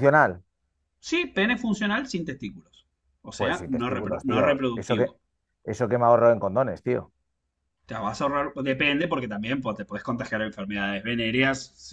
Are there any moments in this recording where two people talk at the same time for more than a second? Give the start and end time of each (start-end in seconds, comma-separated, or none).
3.4-5.1